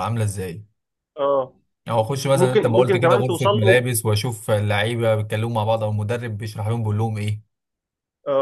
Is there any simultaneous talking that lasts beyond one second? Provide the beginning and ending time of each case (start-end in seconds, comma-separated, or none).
2.3-3.8